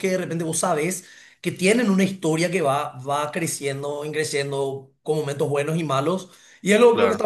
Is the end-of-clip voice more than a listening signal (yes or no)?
no